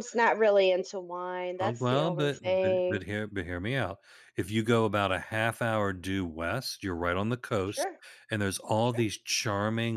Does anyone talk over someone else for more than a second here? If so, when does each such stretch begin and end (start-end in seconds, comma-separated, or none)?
1.6-3.1